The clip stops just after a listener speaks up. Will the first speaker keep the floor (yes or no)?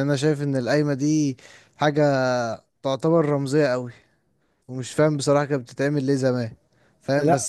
yes